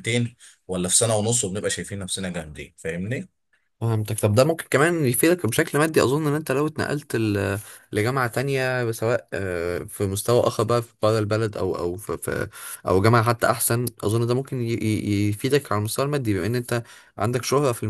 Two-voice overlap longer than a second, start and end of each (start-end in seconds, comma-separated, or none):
none